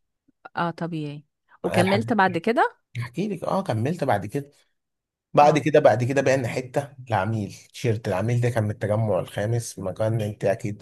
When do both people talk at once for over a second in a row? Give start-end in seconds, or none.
none